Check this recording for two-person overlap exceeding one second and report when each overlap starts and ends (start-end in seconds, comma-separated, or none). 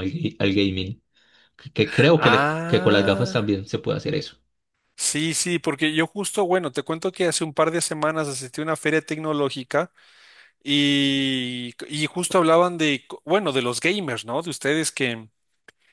2.1-3.4